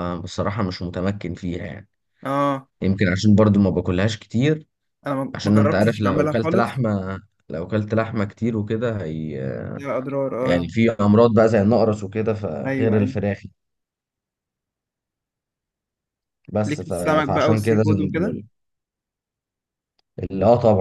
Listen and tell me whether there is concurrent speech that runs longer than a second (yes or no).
yes